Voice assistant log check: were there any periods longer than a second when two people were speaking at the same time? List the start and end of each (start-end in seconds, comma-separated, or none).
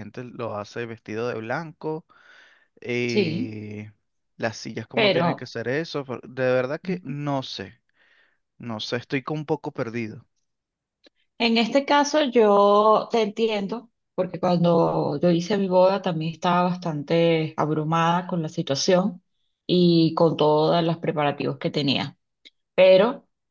none